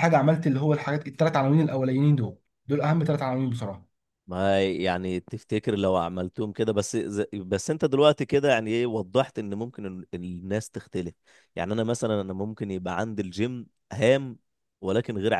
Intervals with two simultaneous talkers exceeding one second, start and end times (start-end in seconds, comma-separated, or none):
none